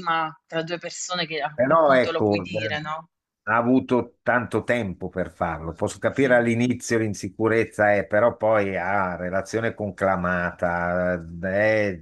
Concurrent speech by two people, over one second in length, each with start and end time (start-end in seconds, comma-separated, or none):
1.5-2.9